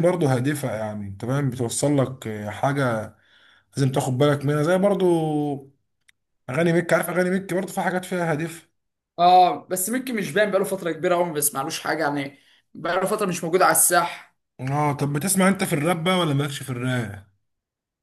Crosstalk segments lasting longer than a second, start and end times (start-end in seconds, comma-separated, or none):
none